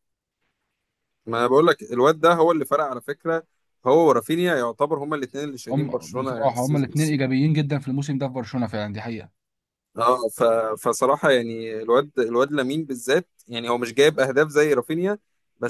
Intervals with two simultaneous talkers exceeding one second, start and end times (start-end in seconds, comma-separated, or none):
5.7-7.2